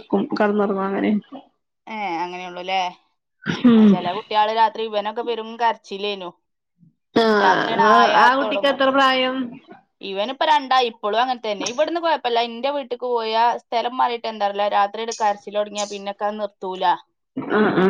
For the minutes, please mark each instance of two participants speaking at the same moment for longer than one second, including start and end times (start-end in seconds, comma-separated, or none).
7.4-8.8